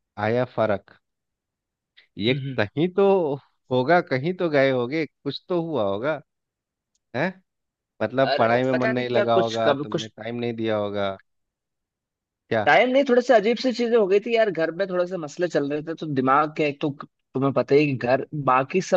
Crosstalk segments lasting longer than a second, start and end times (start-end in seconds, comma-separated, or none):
8.3-10.1